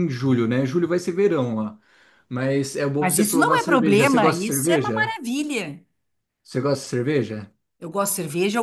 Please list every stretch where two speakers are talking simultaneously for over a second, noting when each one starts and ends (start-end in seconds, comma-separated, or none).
3.0-5.1